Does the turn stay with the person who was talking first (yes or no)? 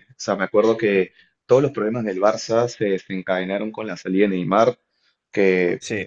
yes